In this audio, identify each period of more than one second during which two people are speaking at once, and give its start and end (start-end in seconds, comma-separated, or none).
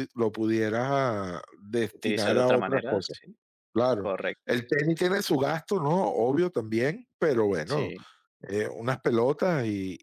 1.9-3.2